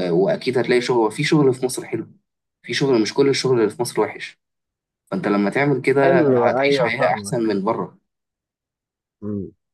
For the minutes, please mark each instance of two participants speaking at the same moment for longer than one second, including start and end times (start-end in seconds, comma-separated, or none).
6.0-7.6